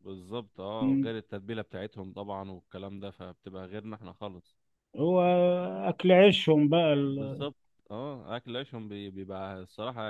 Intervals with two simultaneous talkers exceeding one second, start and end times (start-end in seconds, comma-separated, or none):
none